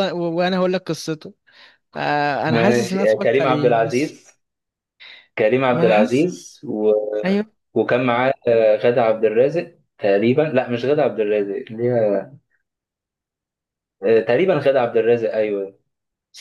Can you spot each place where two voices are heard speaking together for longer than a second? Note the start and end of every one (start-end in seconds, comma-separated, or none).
2.5-4.2